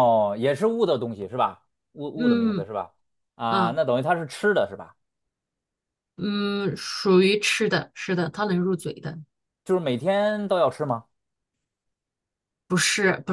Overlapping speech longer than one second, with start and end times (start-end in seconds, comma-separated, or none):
none